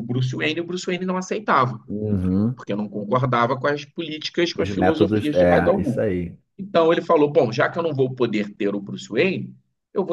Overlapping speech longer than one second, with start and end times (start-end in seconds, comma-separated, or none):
4.5-6.1